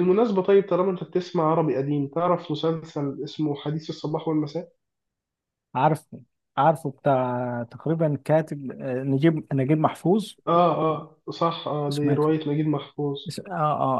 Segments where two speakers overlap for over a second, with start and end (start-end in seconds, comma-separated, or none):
none